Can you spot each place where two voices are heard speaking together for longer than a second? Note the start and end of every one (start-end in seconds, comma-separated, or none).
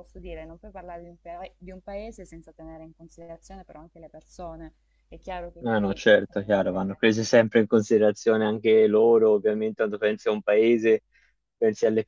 5.6-7.0